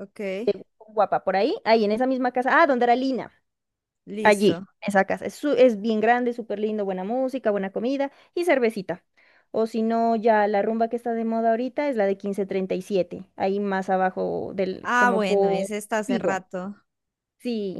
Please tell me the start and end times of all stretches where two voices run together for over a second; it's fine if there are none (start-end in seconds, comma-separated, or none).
14.8-16.4